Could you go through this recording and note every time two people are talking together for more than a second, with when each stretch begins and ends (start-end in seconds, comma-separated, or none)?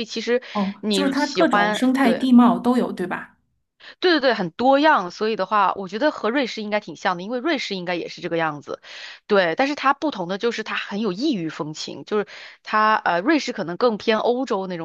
0.8-2.3